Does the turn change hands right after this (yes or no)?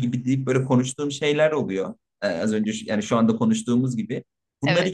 no